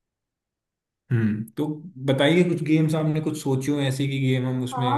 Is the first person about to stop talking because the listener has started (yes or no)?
yes